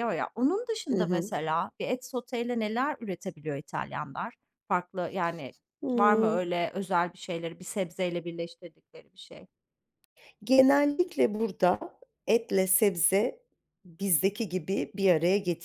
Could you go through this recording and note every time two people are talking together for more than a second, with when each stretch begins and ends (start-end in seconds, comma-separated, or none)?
none